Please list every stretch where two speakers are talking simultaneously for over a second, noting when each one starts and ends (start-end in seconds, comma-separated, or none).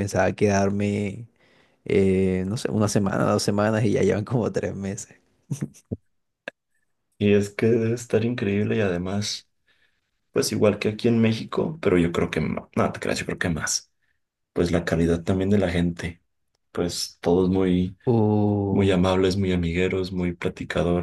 none